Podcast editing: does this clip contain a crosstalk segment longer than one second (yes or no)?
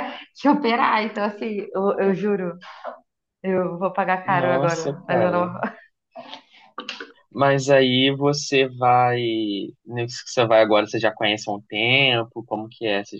yes